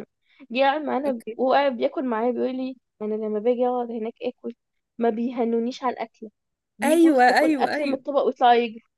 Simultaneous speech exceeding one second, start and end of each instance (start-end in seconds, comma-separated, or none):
6.8-8.0